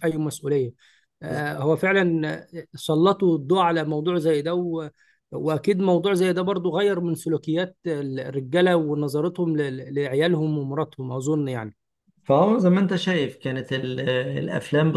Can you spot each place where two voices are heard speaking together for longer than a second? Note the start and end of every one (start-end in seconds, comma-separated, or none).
none